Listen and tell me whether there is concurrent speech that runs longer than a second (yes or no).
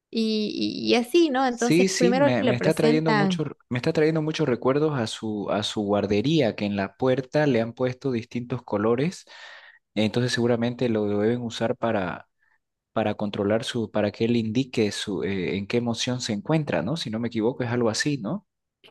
yes